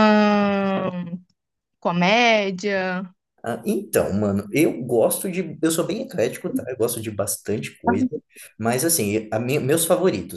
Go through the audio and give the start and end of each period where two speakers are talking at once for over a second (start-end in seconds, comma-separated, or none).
none